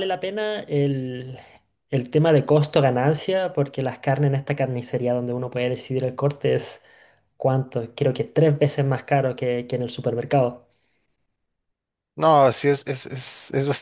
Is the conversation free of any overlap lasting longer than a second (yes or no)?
yes